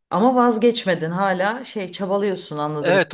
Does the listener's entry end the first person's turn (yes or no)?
yes